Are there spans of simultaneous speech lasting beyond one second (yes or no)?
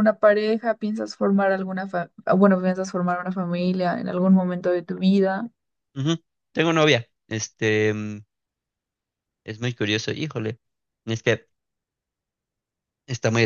no